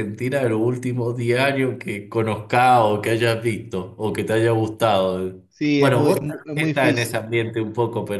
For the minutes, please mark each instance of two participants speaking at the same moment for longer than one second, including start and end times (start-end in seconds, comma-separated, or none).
5.5-7.2